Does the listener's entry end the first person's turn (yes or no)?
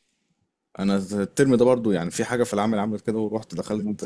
no